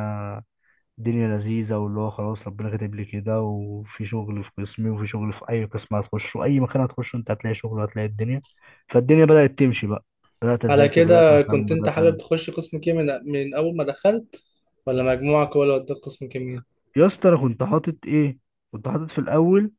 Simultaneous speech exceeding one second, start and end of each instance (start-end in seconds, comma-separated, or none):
10.7-12.3